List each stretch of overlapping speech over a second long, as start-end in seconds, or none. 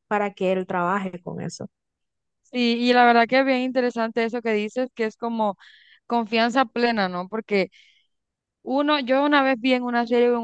none